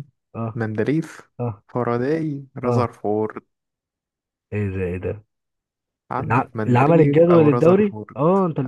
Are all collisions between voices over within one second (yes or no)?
no